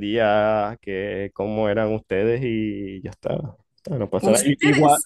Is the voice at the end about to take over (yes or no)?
no